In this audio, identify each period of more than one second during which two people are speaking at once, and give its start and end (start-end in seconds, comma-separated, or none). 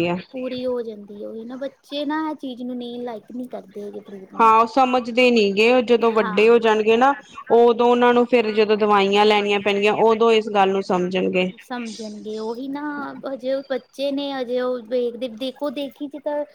none